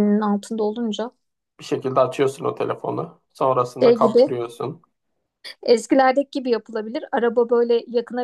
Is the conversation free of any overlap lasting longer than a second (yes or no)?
yes